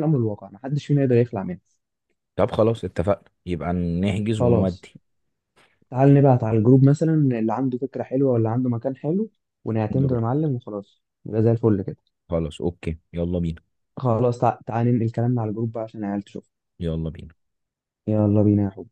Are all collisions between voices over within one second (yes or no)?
yes